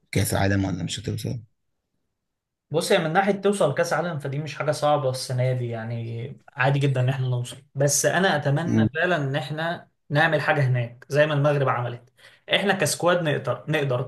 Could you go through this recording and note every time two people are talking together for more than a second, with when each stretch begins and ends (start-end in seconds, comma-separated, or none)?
none